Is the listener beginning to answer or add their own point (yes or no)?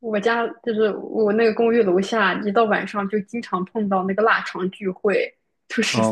yes